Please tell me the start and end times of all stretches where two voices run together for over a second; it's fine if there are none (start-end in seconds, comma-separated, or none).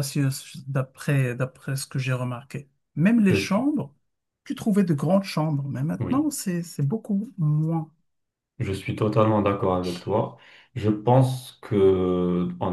none